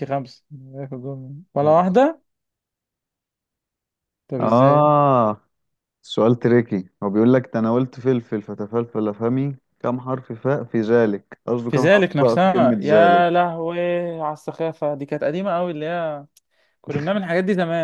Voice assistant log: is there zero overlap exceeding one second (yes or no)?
no